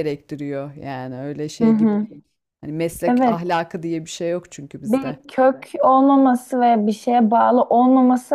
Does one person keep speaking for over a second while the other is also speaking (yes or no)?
no